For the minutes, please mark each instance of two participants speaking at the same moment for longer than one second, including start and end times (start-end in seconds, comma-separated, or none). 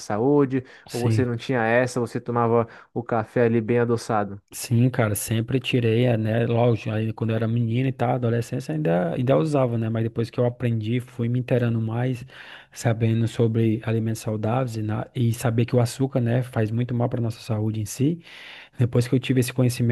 none